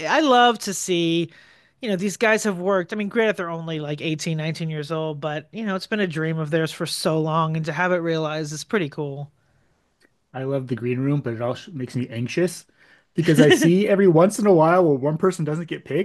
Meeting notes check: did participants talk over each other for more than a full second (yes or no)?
no